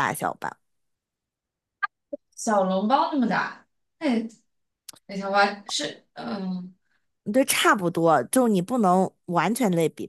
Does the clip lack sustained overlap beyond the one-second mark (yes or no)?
yes